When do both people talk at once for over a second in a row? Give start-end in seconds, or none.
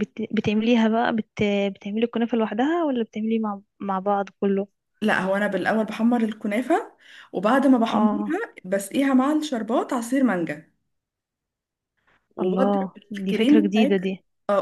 12.4-14.1